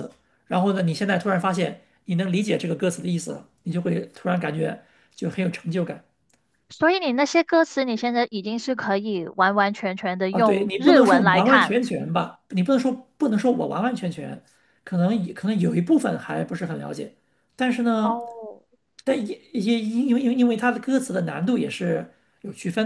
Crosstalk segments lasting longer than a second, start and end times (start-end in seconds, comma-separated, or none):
10.3-11.8